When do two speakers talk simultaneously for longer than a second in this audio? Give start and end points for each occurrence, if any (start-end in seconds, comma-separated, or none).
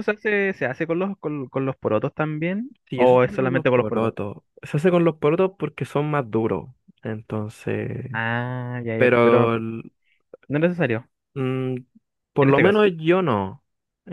2.9-4.1